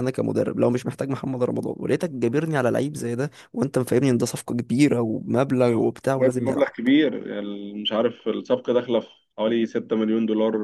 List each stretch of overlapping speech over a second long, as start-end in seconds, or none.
none